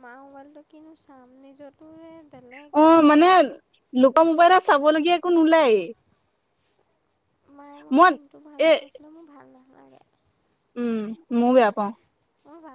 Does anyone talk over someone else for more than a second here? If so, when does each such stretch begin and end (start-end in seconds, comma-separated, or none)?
none